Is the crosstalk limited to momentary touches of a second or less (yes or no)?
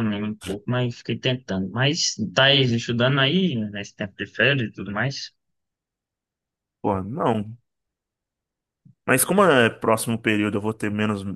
yes